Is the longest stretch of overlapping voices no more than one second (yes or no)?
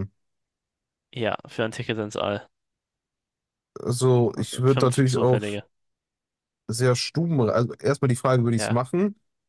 no